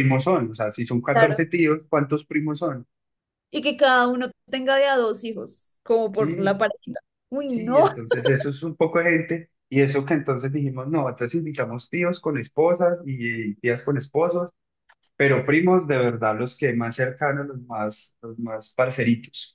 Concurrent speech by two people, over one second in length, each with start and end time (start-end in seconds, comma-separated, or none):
none